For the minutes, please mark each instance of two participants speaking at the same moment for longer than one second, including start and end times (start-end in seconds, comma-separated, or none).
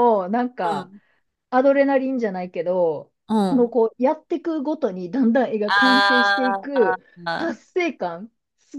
5.7-7.6